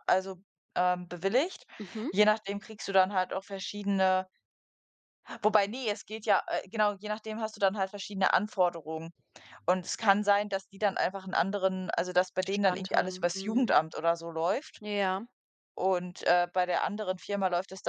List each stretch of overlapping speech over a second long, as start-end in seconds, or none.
12.4-13.7